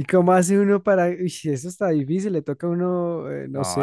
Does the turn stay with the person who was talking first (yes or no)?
no